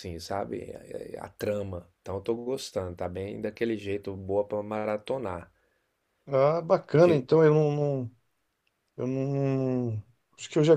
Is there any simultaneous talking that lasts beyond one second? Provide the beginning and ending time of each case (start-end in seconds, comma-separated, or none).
none